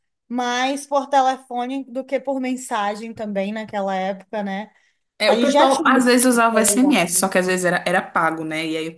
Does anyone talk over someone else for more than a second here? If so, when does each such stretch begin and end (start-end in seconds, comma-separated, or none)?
5.2-7.0